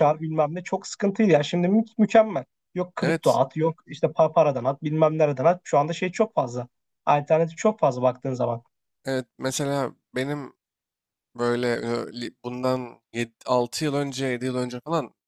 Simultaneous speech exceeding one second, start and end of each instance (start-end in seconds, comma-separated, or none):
none